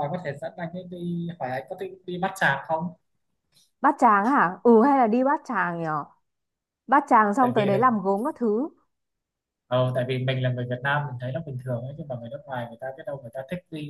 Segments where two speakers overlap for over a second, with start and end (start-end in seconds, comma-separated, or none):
none